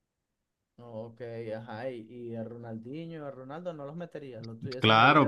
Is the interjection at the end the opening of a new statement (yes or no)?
yes